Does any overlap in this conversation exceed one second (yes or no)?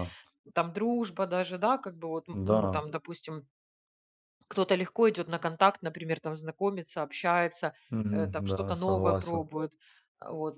yes